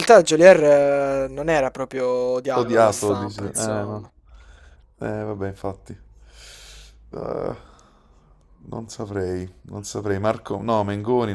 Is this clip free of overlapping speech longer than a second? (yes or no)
no